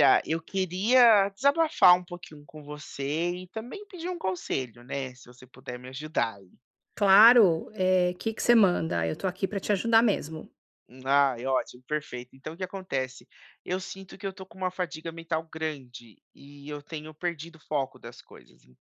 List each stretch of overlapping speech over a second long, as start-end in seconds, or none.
none